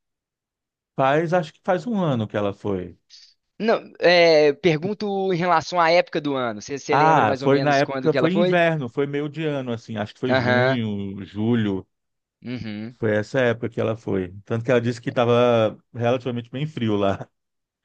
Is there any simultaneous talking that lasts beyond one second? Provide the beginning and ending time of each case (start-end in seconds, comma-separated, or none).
6.9-8.6